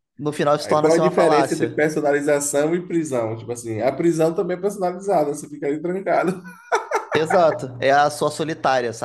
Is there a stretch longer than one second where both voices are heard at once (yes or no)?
yes